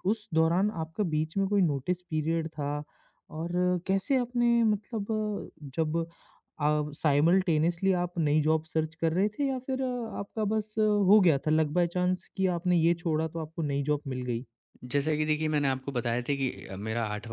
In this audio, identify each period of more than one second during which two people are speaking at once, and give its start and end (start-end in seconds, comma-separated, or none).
none